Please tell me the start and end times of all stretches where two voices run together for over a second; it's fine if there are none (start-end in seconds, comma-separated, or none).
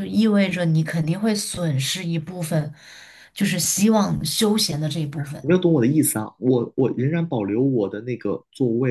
none